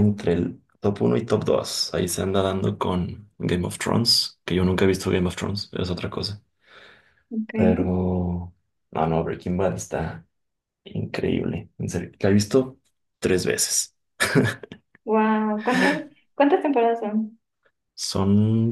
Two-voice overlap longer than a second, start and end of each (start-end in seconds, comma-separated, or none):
none